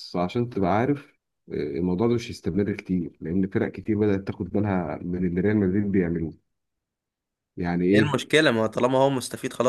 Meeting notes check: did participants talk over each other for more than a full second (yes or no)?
no